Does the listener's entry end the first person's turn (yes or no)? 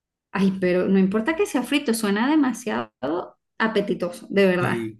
no